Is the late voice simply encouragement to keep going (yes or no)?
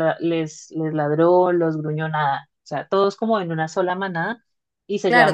yes